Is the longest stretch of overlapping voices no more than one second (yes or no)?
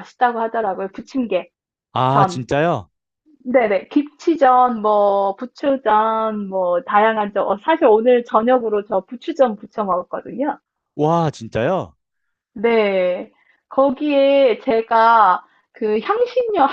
yes